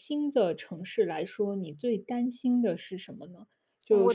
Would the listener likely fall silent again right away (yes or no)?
yes